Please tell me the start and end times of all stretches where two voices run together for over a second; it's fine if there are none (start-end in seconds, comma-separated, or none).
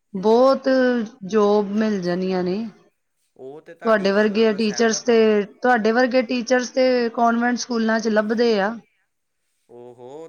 3.8-5.2